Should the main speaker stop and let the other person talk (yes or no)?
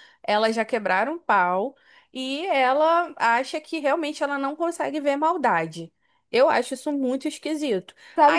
yes